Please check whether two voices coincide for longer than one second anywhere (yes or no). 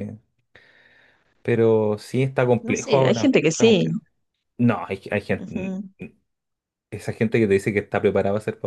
yes